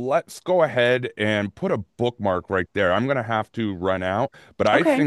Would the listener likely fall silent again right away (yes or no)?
yes